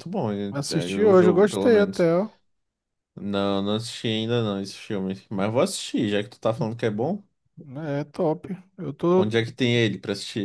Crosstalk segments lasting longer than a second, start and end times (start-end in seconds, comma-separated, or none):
0.5-2.1